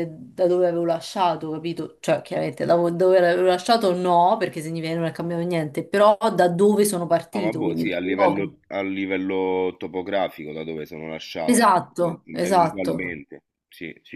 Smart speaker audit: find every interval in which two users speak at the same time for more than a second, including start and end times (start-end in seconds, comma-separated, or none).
7.3-8.6, 11.5-13.2